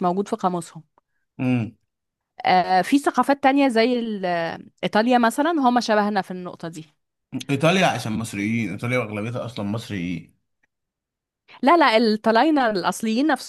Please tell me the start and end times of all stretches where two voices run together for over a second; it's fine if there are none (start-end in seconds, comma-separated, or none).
none